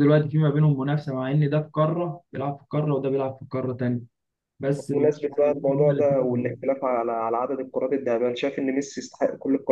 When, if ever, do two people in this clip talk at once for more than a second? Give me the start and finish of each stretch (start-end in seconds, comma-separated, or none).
4.9-6.7